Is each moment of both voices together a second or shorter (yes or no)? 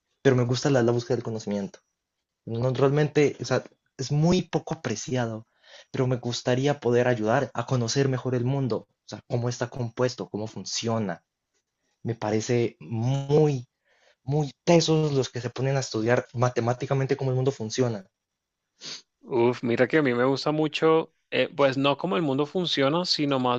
yes